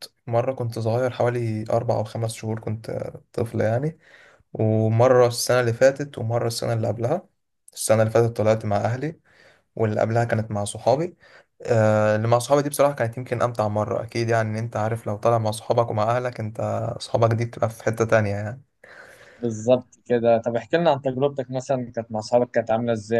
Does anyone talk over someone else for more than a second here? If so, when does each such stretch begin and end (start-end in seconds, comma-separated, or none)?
none